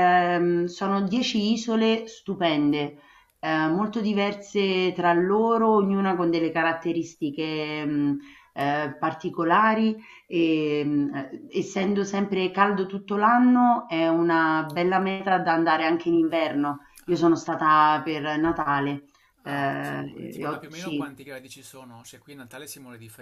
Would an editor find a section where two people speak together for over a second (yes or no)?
yes